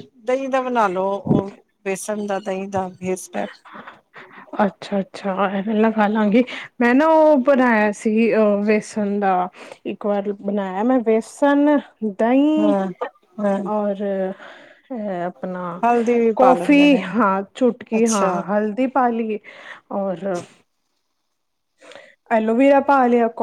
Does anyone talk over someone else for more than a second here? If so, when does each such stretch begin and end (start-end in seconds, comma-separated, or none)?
none